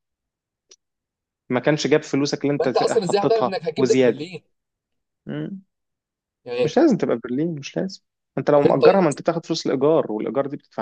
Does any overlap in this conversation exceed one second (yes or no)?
yes